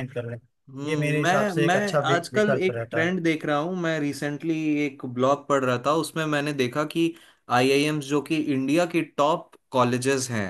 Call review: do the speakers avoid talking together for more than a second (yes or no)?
no